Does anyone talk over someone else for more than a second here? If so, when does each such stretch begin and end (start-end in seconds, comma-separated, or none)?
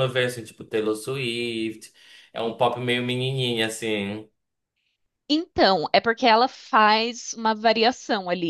none